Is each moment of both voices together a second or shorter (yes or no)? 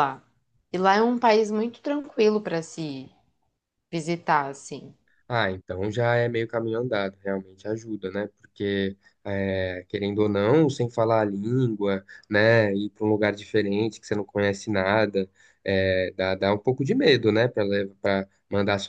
yes